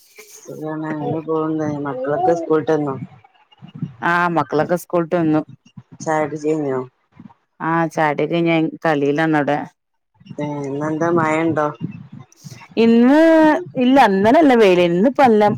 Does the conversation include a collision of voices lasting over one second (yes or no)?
no